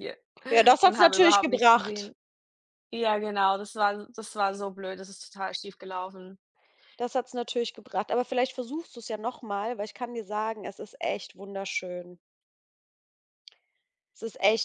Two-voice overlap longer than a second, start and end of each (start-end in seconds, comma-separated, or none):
0.8-2.1